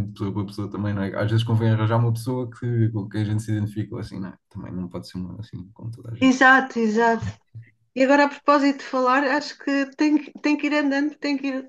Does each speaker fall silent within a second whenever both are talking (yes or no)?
yes